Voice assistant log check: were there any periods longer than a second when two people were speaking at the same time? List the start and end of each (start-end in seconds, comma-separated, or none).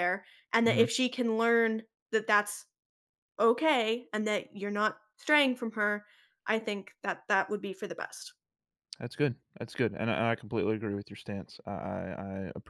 none